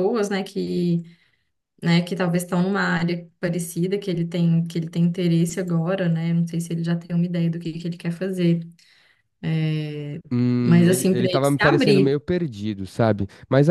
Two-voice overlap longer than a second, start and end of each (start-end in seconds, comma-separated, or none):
10.7-12.2